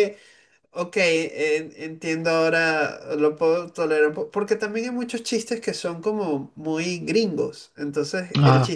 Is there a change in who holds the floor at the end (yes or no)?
no